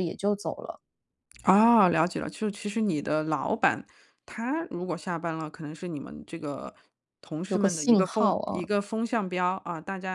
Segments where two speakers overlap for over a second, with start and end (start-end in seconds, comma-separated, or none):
7.5-8.7